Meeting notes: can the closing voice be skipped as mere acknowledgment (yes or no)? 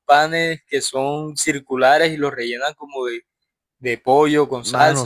no